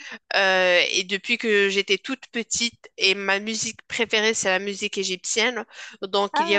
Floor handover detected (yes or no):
no